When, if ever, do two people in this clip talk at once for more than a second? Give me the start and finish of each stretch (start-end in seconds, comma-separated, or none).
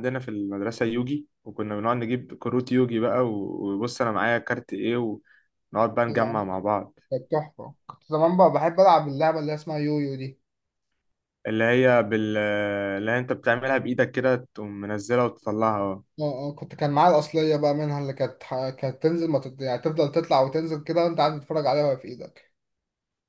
none